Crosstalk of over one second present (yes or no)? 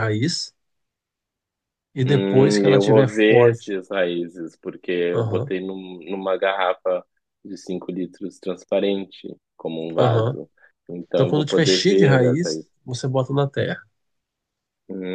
yes